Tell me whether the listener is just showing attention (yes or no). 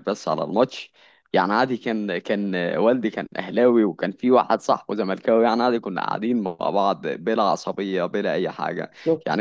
yes